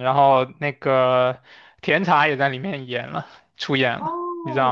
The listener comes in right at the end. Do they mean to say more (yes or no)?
yes